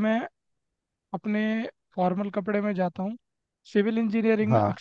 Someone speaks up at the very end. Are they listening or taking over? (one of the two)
listening